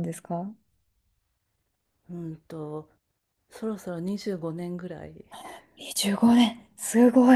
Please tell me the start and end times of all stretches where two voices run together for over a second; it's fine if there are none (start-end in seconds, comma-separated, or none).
none